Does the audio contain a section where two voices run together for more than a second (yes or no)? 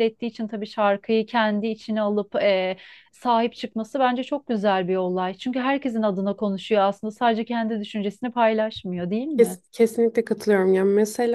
no